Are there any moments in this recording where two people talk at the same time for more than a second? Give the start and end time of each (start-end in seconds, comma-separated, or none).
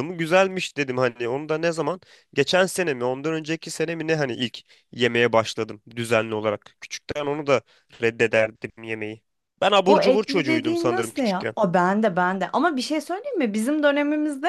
9.9-11.6